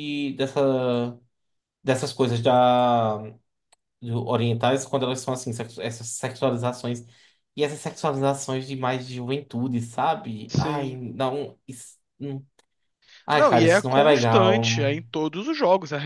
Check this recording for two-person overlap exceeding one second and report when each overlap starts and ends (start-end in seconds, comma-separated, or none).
13.3-14.6